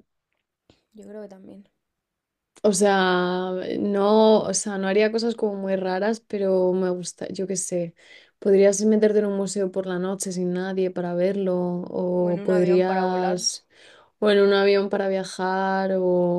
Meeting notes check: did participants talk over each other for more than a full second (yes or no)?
yes